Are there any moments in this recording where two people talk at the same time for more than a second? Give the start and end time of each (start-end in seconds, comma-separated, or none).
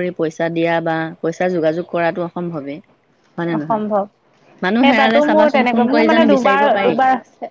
5.3-7.0